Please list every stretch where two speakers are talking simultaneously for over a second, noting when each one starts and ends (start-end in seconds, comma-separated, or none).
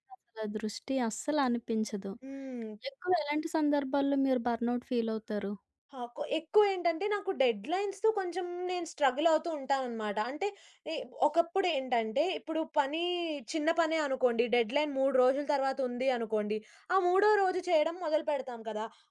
none